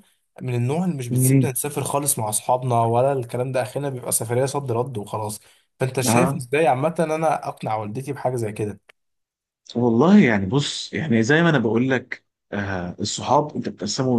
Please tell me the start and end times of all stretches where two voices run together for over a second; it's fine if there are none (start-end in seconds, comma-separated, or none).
none